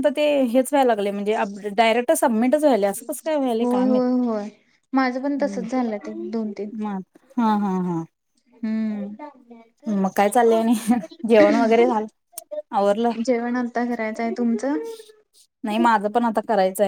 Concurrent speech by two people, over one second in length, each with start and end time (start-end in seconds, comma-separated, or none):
none